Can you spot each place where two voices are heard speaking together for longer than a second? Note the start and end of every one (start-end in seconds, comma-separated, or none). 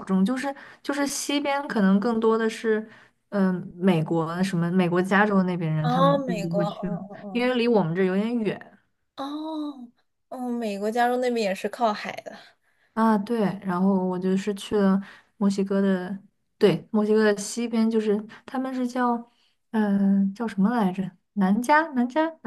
5.8-7.5